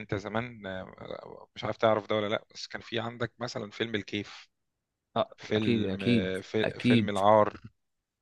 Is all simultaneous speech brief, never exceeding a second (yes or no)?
no